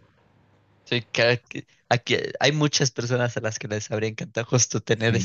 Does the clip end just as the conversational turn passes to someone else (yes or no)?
yes